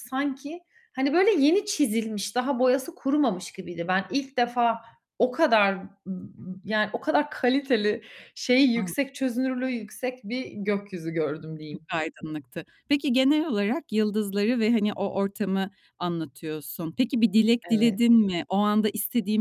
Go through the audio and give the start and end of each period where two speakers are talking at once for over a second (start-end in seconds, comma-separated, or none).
none